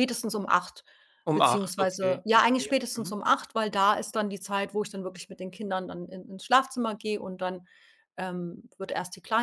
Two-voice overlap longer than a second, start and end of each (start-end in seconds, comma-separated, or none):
1.3-3.1